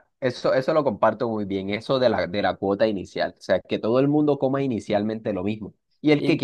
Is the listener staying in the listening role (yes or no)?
yes